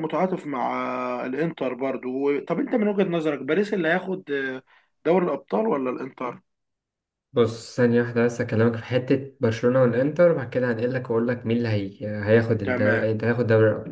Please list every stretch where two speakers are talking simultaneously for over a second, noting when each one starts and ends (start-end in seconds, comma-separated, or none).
none